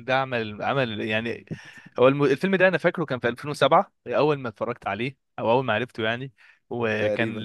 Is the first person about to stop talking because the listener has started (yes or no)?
no